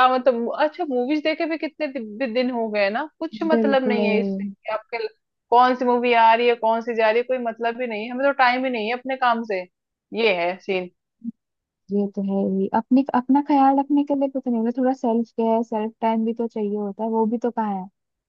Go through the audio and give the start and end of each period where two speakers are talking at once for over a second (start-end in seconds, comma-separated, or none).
none